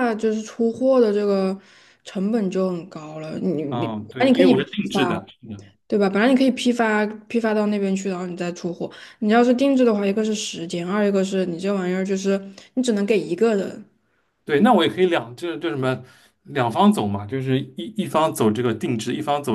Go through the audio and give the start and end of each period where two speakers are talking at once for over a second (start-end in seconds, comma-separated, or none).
3.7-5.2